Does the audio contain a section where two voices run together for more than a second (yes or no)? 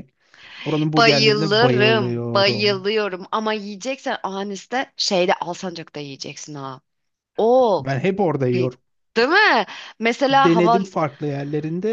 yes